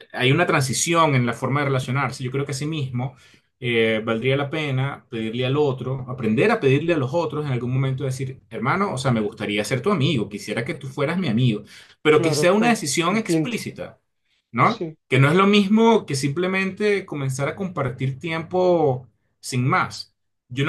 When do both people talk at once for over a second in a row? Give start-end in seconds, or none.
12.1-13.6